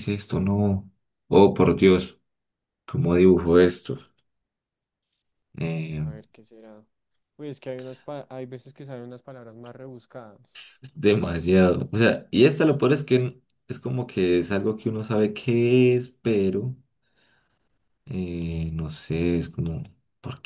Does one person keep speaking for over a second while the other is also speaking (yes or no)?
no